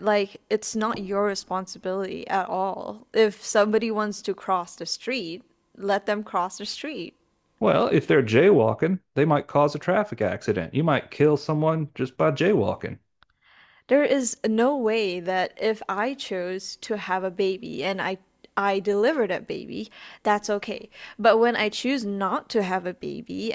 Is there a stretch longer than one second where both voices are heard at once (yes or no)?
no